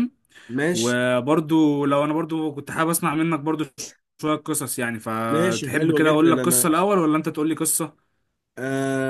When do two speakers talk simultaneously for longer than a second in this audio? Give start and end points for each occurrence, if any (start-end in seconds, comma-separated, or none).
5.3-6.7